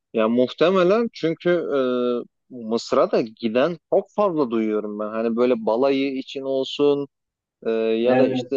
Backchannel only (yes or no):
yes